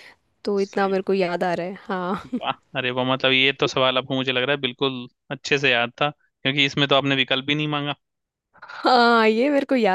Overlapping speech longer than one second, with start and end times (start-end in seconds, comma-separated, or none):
none